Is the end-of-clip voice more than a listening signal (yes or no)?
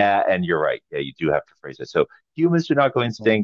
no